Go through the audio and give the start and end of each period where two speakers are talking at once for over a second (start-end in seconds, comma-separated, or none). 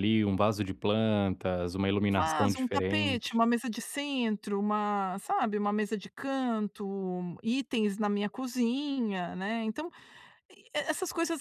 2.1-3.4